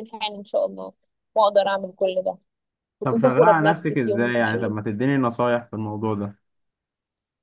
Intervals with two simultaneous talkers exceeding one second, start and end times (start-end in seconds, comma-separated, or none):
3.0-4.7